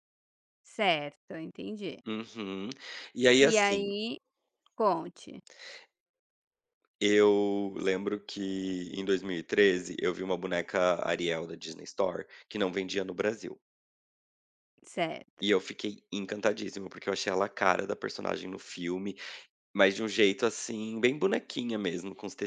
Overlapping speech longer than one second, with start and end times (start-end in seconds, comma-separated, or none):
none